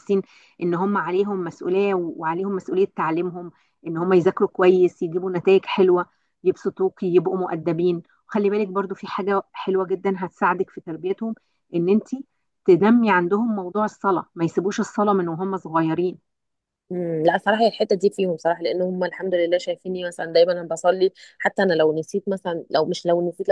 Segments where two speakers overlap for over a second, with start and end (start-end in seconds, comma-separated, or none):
none